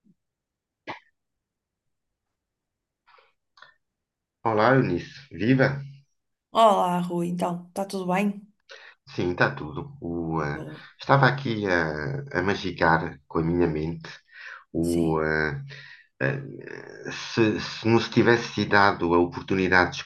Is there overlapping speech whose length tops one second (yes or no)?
no